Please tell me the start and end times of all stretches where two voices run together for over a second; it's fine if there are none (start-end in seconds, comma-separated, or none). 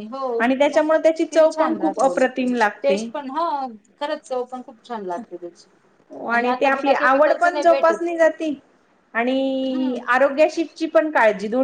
0.7-3.1